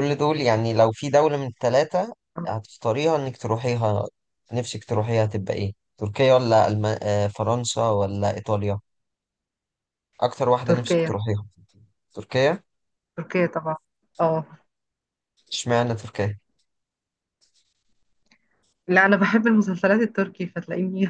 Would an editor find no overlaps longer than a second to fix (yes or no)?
yes